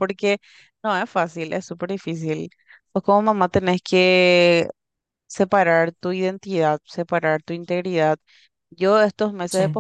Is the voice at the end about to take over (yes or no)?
no